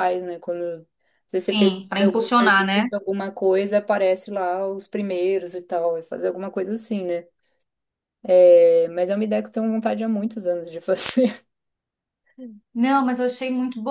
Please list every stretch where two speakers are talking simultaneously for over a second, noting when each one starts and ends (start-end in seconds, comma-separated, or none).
1.4-2.9